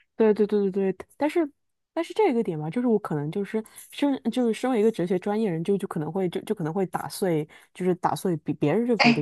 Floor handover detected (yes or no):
no